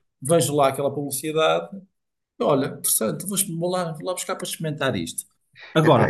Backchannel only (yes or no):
no